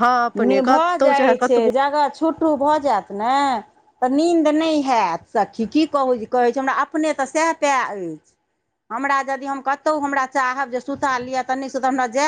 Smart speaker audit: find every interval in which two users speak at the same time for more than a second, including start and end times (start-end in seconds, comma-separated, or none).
none